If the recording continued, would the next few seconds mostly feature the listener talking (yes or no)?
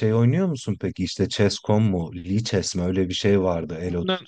yes